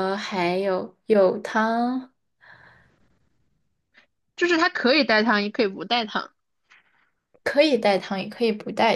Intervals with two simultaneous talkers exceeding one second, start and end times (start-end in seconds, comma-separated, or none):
none